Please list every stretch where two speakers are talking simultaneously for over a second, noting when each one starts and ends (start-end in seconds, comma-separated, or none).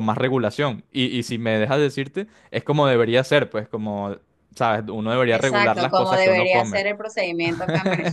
5.3-6.8